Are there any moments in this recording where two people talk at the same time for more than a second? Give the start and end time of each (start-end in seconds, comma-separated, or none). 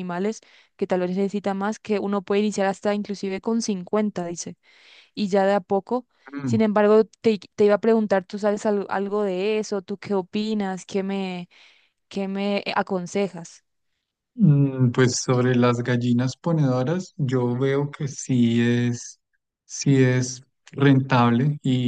none